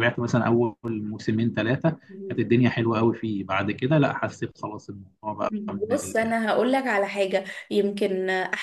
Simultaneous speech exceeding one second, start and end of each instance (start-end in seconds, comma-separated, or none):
none